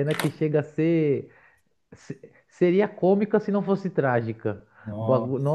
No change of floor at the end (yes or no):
yes